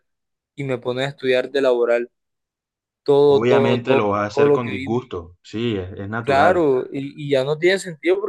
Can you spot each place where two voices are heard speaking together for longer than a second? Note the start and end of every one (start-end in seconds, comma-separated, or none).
3.3-5.0